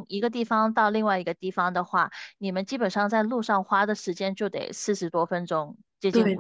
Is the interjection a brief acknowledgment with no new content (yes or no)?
no